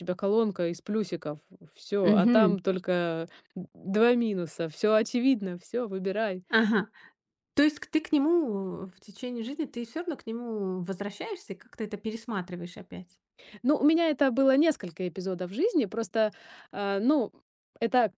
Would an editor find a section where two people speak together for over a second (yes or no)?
no